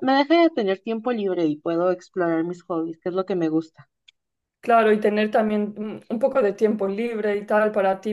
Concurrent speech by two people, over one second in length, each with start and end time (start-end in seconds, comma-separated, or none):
none